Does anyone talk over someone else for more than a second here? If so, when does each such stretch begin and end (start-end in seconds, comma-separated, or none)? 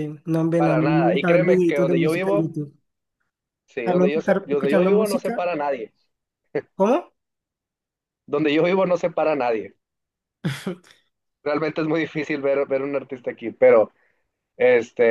0.6-2.5, 3.8-5.5